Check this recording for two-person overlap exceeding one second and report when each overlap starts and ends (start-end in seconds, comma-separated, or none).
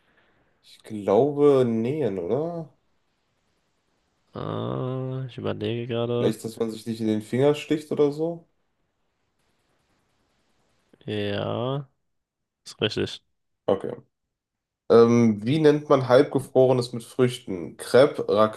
none